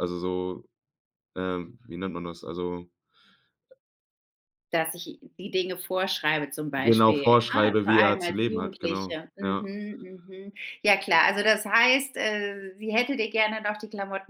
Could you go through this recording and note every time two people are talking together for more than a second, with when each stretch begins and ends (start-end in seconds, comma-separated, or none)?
6.8-9.7